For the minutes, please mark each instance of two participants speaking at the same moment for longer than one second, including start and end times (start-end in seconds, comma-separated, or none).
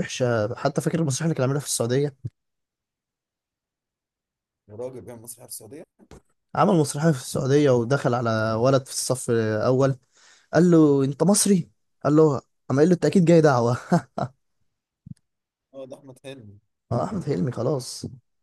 none